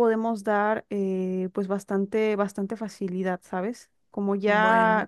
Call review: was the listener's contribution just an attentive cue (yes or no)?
yes